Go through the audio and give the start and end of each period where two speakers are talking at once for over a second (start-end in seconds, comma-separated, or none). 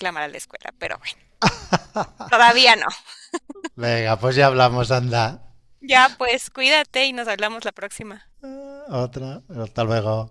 none